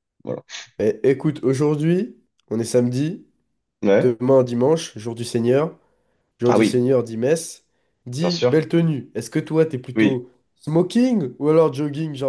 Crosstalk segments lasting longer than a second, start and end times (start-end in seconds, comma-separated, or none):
none